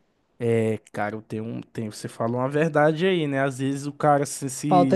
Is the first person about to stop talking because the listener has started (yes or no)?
yes